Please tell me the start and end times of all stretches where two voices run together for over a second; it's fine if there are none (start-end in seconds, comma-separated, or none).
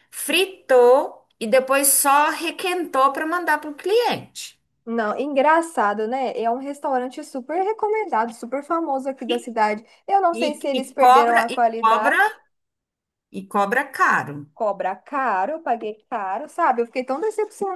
10.3-12.2